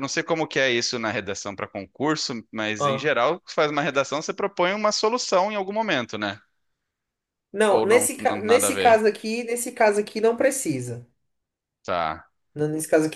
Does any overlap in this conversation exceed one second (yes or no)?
yes